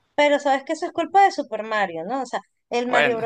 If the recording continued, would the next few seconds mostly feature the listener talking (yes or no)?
no